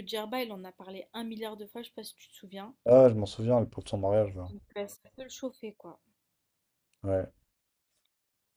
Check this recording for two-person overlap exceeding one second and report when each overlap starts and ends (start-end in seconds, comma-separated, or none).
none